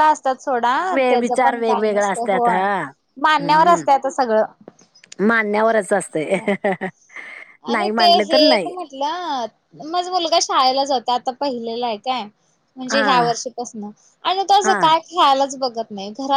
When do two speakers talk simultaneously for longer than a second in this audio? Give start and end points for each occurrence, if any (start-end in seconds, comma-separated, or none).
1.1-2.6